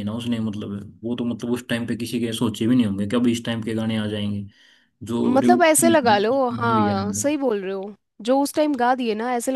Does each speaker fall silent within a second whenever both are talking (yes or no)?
no